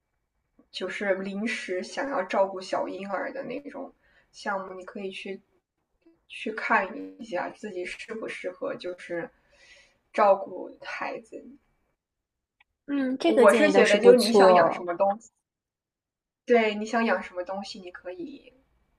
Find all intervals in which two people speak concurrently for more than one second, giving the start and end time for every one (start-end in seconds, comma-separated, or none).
13.3-14.9